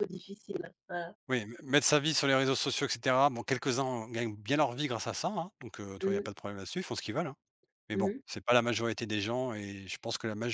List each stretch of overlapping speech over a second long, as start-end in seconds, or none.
none